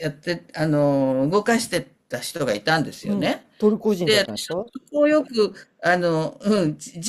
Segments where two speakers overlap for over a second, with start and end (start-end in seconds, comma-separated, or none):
none